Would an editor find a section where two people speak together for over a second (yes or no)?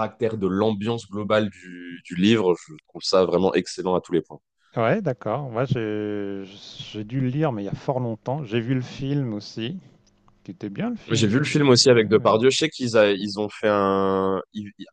yes